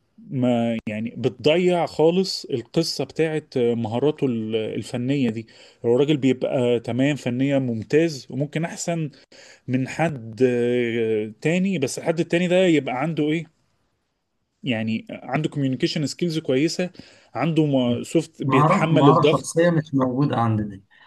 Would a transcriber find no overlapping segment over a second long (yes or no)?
no